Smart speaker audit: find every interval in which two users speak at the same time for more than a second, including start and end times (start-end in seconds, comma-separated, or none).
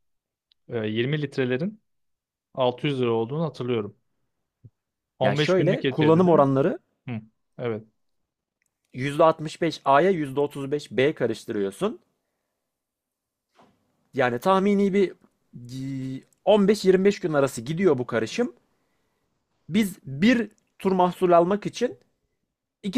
5.2-6.5